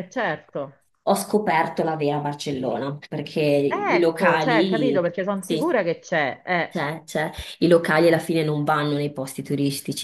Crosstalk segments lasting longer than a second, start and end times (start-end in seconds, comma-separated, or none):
3.7-5.8